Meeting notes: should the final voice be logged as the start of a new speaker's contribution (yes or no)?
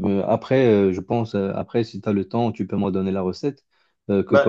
no